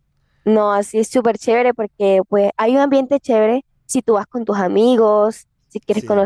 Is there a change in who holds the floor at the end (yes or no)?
no